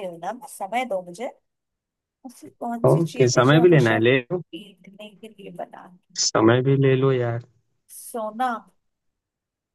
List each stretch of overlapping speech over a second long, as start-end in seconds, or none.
2.9-4.4